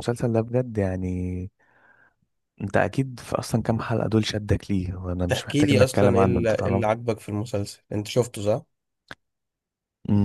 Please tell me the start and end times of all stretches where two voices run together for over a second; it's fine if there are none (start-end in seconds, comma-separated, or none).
5.3-6.9